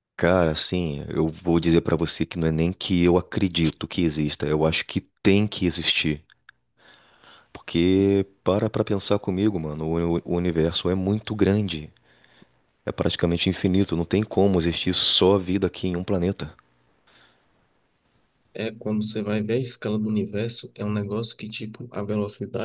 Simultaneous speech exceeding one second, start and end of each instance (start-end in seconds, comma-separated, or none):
none